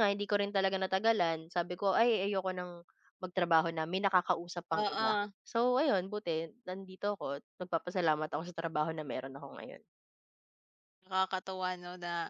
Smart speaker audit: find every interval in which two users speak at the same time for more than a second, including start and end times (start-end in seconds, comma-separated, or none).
none